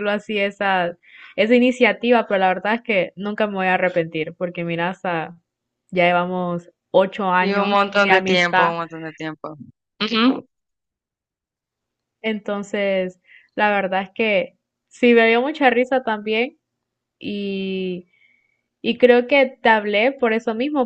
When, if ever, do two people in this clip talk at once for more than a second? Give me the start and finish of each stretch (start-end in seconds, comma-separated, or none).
7.3-8.7